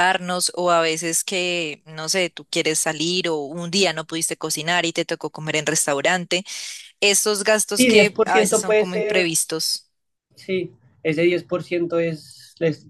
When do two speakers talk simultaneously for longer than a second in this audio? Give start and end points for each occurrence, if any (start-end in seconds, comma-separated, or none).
7.7-9.3